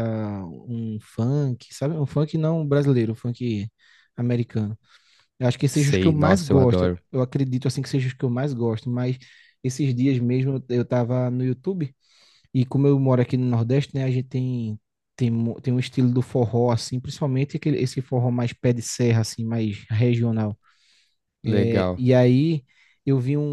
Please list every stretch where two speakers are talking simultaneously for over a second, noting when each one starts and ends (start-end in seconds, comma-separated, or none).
5.7-7.0